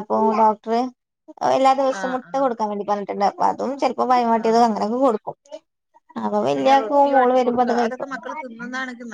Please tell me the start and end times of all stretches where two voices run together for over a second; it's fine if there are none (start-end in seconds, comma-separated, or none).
6.5-8.1